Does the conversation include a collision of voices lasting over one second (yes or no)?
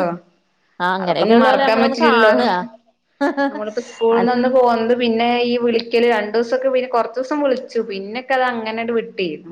yes